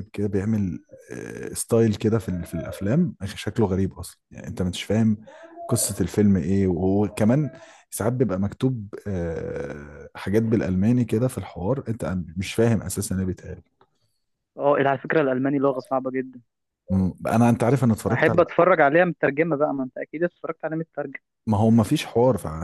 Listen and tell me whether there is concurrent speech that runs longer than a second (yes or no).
no